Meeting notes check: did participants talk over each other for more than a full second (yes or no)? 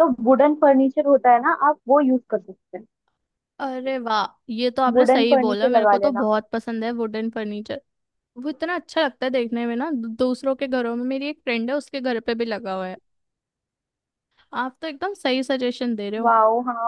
yes